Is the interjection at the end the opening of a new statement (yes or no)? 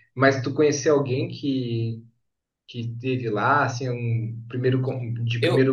no